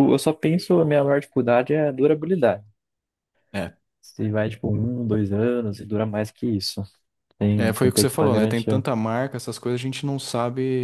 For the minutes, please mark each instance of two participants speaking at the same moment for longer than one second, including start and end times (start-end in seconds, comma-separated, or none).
7.5-8.9